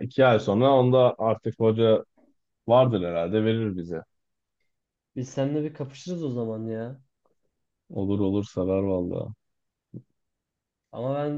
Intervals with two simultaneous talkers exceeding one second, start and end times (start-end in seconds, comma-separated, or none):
none